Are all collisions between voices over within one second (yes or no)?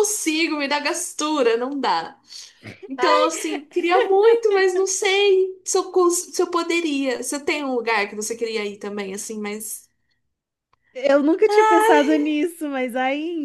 yes